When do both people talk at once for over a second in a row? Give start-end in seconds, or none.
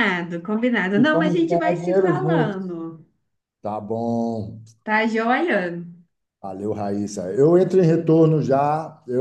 1.0-2.6